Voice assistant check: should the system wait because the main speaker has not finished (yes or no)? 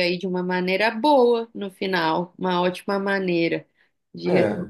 yes